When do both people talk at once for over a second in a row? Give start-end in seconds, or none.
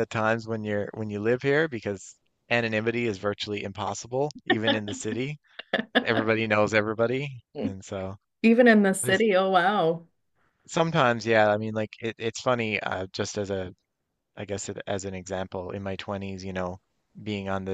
none